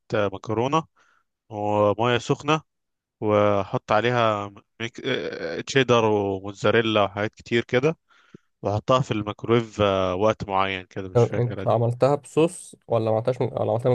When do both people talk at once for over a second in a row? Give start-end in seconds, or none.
none